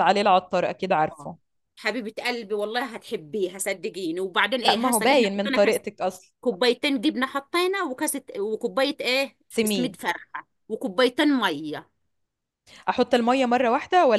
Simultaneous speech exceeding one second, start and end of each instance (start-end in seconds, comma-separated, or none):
4.6-5.8